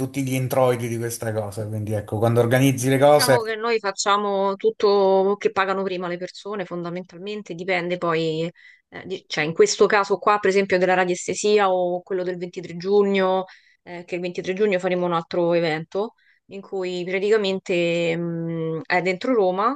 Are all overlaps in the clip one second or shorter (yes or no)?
yes